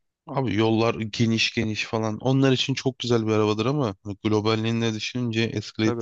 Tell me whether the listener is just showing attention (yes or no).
no